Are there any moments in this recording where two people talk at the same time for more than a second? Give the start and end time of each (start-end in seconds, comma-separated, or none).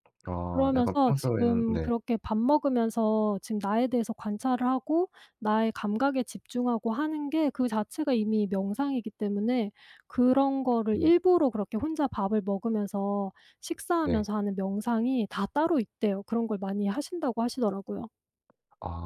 0.5-1.9